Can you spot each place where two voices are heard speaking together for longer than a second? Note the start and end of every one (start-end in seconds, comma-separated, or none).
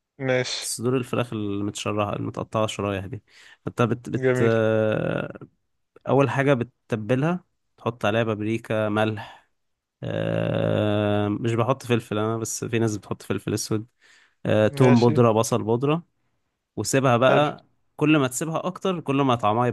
none